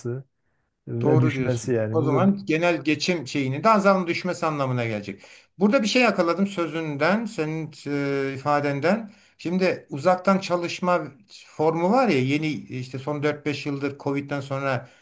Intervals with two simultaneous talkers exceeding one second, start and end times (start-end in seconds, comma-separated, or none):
1.0-2.3